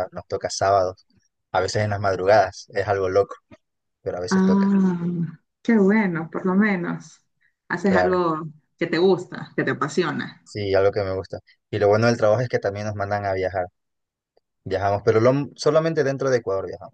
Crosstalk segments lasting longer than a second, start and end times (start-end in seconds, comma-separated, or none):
none